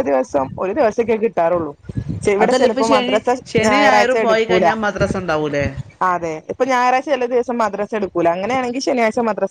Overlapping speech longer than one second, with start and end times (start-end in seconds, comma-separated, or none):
2.4-4.7